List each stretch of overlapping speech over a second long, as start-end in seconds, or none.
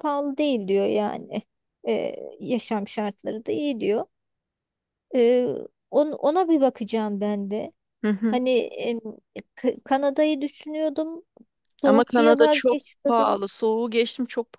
11.8-13.4